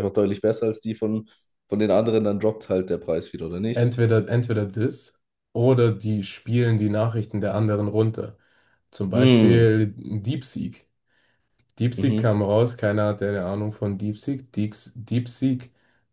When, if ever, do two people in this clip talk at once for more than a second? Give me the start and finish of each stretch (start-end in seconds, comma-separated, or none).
none